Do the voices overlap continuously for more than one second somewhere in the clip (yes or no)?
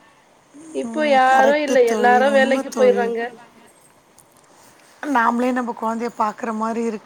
yes